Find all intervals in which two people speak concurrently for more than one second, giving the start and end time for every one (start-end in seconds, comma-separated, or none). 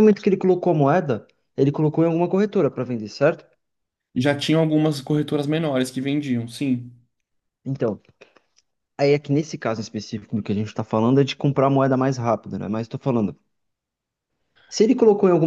none